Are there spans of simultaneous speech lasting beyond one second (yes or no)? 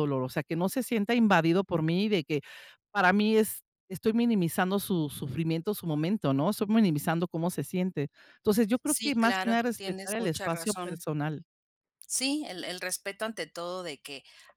yes